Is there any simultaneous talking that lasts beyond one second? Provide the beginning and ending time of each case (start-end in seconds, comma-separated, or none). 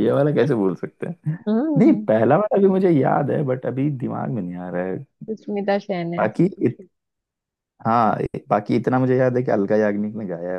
none